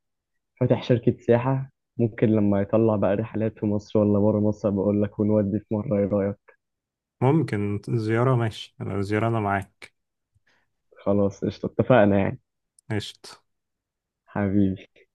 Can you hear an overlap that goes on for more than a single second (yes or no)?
no